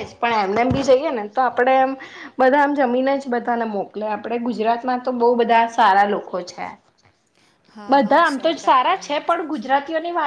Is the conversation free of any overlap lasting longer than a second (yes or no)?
no